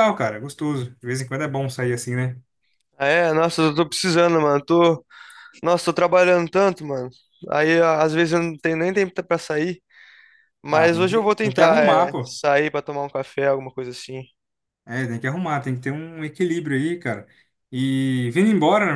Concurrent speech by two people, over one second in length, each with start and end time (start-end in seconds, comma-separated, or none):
10.7-12.4